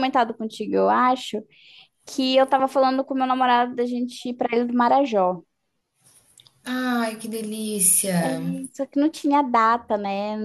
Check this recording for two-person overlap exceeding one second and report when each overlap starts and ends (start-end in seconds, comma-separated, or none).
none